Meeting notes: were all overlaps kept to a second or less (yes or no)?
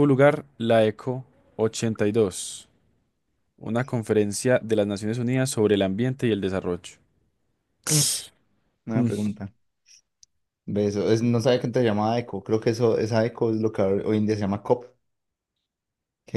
yes